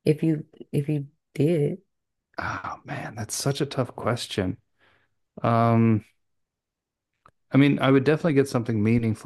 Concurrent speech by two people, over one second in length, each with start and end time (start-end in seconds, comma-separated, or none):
none